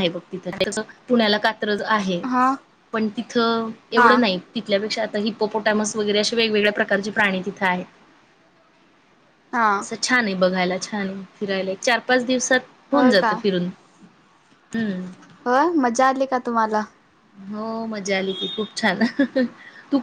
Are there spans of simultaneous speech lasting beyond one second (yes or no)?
no